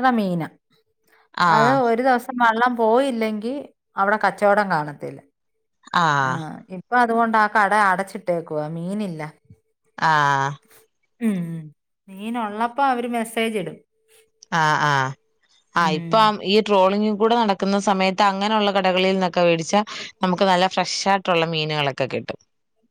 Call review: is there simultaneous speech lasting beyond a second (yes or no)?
no